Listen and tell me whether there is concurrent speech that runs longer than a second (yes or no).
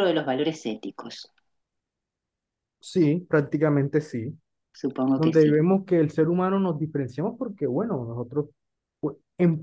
no